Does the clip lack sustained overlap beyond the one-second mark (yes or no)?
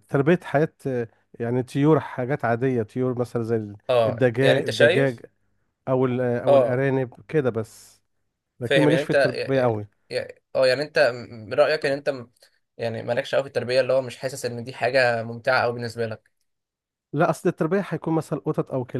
no